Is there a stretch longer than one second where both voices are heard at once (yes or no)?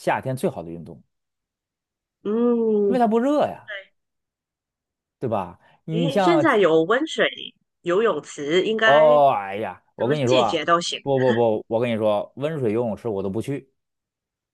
yes